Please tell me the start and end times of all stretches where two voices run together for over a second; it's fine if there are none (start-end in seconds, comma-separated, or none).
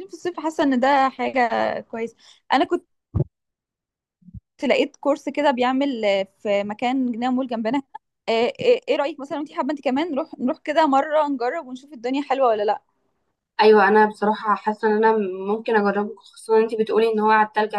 none